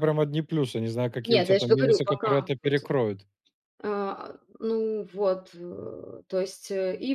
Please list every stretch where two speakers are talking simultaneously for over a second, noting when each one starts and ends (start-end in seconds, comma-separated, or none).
1.2-2.9